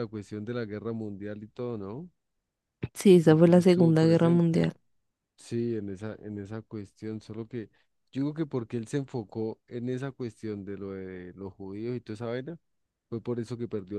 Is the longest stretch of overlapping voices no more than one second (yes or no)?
no